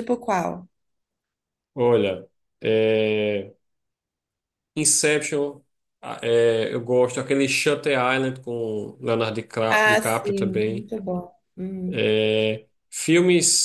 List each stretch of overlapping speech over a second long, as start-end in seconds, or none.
9.7-10.9